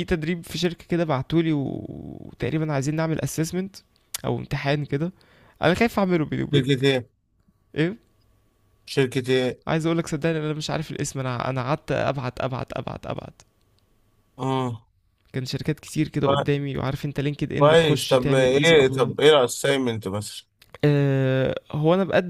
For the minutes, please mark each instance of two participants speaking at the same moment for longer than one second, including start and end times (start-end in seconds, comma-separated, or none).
17.6-19.1